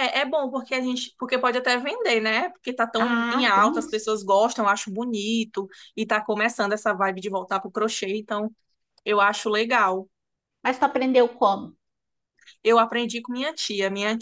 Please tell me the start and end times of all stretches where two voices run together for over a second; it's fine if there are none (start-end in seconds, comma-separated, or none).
3.0-4.2